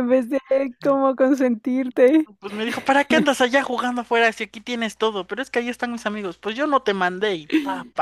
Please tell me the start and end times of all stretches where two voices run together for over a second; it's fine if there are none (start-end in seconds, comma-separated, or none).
none